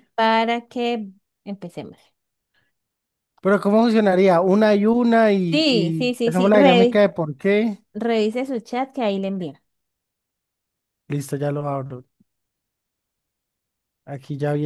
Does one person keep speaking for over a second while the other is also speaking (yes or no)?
yes